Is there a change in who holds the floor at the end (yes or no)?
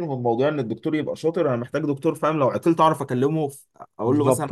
yes